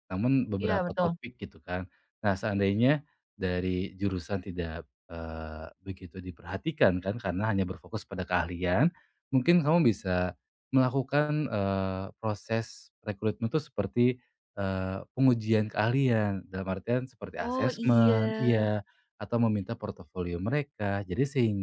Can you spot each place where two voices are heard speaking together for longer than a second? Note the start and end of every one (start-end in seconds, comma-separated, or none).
17.4-18.6